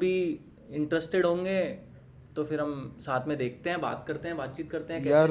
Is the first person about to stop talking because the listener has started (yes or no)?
yes